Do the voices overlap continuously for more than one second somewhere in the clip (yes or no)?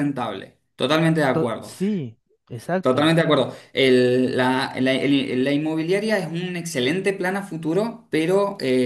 no